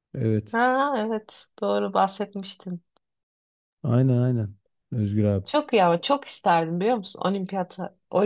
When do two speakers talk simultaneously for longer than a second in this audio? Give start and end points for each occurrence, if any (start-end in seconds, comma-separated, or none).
none